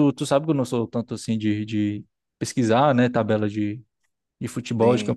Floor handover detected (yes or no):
no